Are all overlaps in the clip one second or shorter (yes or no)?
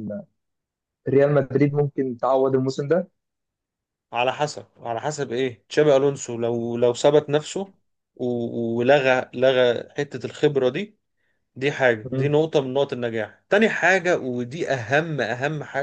yes